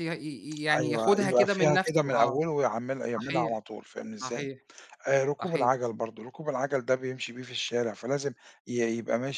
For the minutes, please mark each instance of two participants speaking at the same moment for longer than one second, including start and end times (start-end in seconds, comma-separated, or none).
0.7-2.4